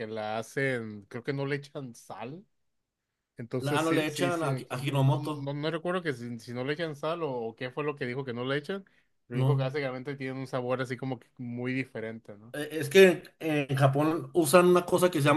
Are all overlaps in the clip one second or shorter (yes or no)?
no